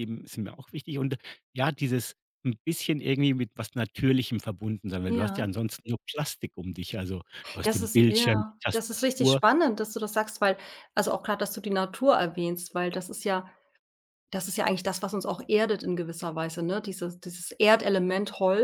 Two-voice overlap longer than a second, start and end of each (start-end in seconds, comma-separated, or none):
7.6-9.4